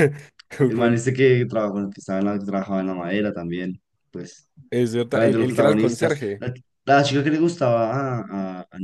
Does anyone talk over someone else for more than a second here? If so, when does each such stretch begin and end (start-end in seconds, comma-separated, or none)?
5.1-6.4